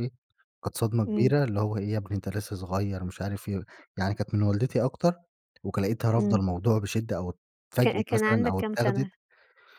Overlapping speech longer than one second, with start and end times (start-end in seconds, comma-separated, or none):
7.8-9.1